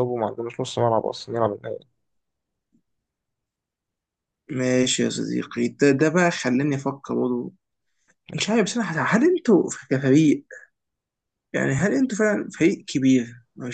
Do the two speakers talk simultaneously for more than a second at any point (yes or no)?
no